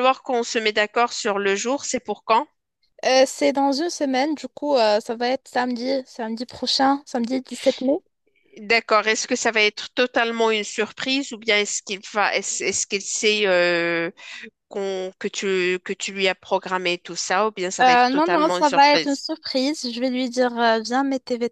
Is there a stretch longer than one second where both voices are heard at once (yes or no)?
yes